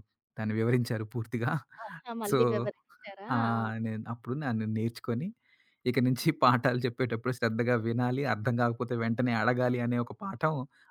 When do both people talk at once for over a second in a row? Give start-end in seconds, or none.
none